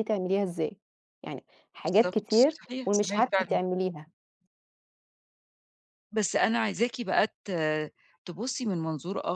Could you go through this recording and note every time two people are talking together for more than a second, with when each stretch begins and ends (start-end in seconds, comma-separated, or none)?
1.8-3.6